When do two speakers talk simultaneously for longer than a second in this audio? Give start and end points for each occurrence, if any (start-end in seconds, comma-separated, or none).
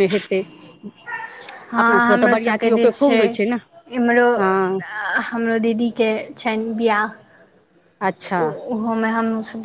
1.7-3.2